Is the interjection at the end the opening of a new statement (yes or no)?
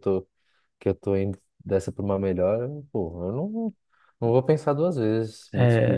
yes